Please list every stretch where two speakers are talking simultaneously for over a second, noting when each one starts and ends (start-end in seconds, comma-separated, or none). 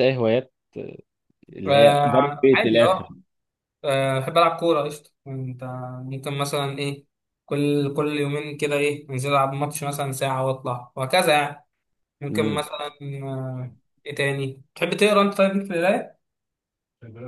1.7-3.1